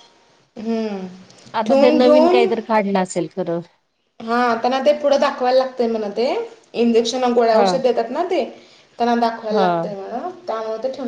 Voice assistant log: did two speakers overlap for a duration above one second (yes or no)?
no